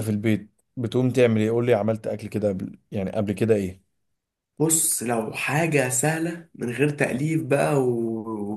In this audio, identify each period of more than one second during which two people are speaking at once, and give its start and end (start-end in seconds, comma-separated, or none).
none